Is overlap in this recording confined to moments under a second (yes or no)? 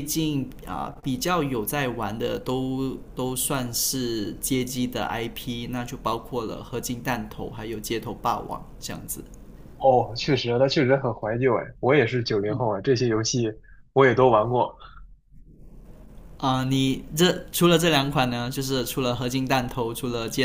yes